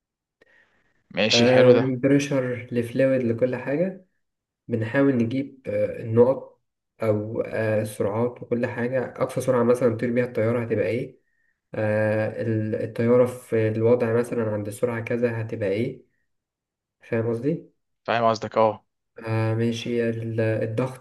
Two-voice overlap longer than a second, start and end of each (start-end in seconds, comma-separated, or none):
none